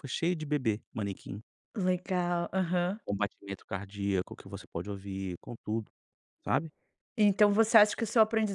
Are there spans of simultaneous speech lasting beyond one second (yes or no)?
no